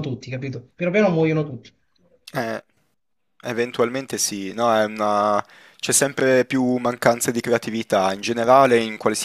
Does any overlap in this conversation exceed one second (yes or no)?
no